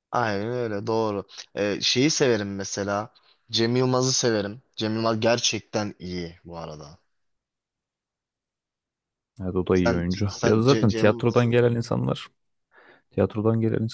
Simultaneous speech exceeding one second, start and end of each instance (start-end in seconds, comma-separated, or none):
9.8-11.6